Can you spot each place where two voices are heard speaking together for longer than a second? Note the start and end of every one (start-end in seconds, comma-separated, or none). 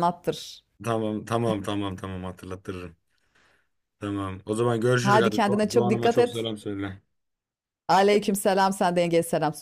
5.0-6.5